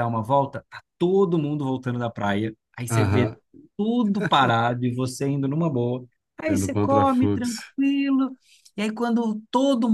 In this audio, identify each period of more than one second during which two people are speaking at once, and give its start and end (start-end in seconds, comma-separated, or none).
6.5-7.7